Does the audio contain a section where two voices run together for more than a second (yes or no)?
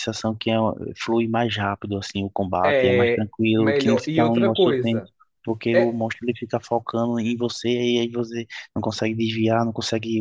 yes